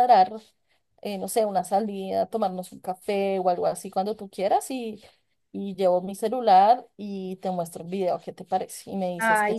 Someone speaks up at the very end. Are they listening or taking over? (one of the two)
taking over